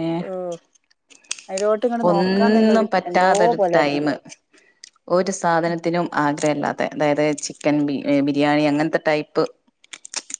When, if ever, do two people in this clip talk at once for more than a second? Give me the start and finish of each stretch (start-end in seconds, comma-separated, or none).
2.1-4.0